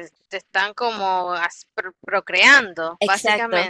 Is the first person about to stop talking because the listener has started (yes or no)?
yes